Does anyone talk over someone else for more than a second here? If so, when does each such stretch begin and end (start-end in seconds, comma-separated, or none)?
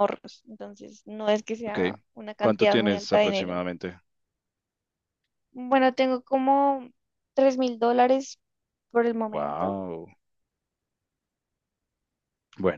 2.4-3.6